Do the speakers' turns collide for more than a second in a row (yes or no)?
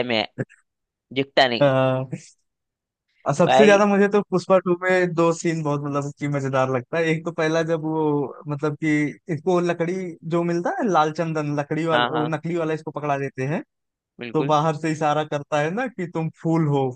no